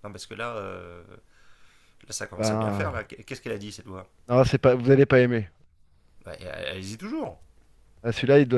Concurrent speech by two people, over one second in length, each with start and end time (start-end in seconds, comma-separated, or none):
none